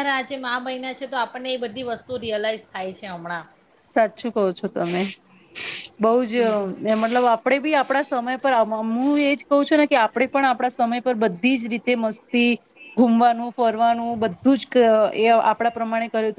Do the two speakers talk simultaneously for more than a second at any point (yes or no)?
no